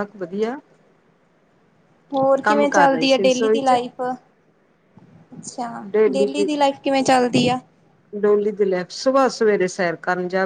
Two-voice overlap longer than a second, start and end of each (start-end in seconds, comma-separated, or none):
2.4-3.7